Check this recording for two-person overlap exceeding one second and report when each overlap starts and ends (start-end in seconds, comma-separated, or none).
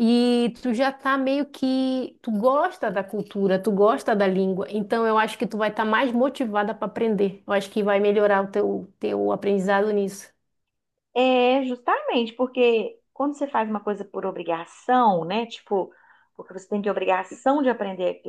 none